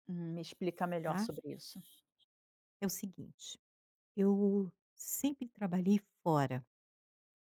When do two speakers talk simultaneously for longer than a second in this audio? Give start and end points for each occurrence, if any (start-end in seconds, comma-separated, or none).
none